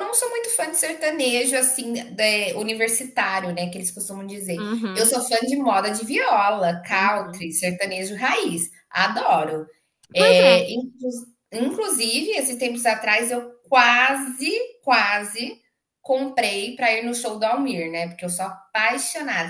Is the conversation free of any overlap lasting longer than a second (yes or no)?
yes